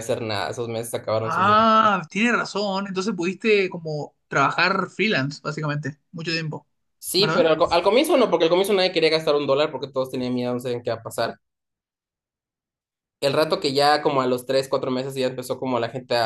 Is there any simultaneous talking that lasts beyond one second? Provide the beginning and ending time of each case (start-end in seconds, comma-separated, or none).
none